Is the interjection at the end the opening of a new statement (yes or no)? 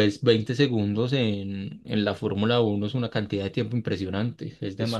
yes